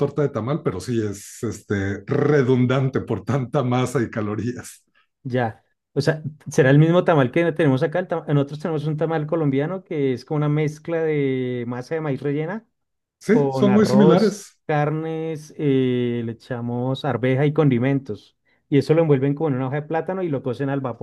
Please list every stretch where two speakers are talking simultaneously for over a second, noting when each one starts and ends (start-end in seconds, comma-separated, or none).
13.3-14.6